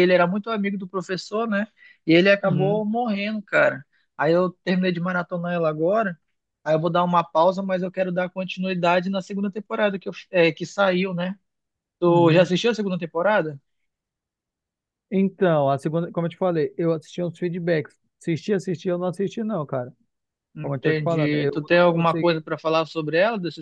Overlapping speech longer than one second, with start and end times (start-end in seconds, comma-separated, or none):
20.6-22.5